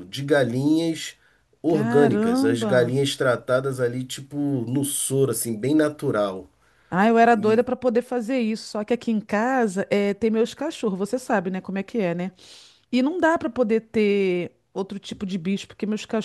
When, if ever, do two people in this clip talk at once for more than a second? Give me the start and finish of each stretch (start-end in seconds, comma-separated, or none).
1.7-3.0